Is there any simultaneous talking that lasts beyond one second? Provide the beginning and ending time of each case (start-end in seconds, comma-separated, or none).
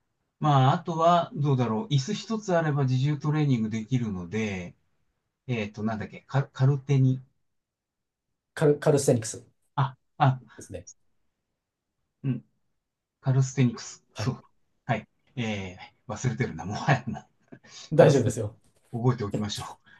none